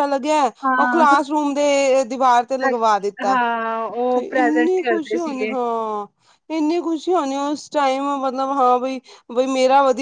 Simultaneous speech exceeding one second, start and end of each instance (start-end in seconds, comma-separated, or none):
4.1-5.5